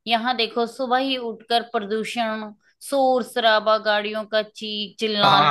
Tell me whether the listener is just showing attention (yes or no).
no